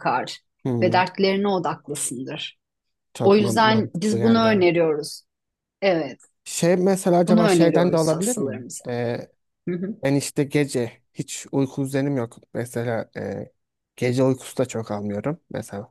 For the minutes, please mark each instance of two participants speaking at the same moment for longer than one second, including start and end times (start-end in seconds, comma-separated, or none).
3.2-4.6, 7.3-8.8